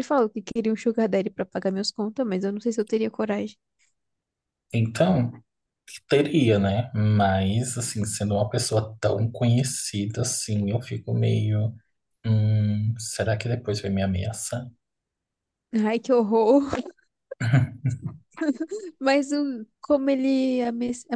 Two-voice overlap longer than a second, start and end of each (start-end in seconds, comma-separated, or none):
none